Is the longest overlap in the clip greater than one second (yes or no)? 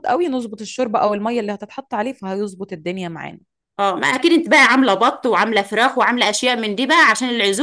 no